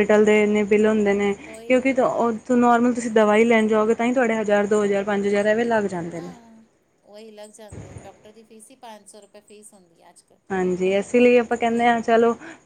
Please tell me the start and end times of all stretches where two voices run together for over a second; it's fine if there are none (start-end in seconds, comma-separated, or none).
none